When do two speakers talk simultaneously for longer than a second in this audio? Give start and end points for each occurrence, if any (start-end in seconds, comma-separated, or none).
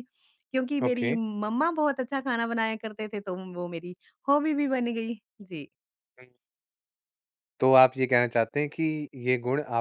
none